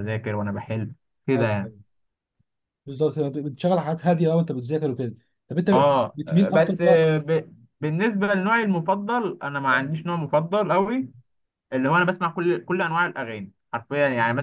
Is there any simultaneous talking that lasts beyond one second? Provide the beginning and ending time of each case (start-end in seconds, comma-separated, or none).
5.7-7.1